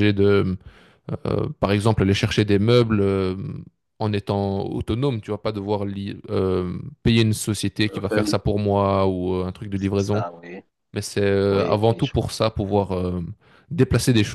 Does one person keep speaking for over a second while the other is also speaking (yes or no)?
no